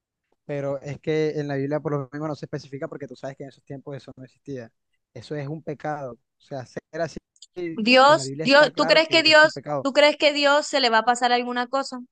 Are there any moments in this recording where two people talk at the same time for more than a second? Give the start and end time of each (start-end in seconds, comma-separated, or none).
8.1-9.9